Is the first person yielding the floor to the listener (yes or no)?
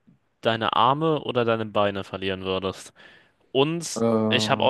no